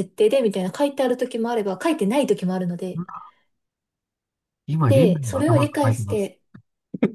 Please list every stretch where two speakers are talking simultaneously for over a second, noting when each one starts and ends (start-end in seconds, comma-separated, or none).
4.9-6.3